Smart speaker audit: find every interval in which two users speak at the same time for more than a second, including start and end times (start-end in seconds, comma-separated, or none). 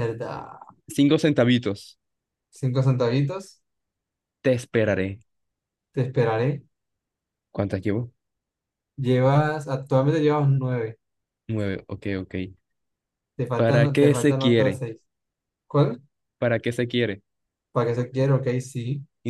13.6-14.8